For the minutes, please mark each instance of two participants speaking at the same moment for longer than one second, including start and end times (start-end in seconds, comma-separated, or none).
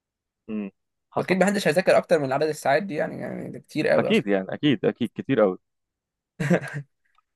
none